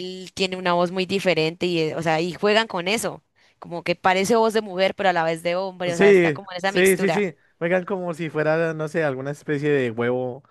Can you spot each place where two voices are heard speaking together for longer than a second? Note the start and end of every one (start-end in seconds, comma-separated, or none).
5.9-7.2